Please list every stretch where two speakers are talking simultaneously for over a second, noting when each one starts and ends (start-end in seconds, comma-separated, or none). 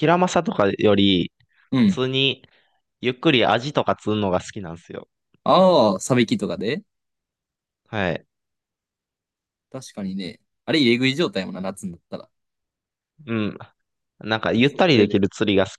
none